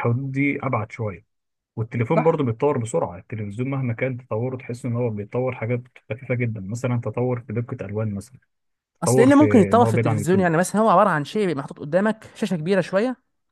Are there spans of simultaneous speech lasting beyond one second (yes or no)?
yes